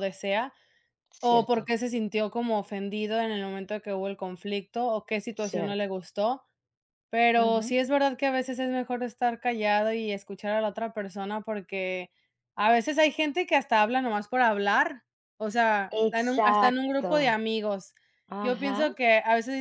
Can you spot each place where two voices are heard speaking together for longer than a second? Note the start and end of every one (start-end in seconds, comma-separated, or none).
15.9-17.4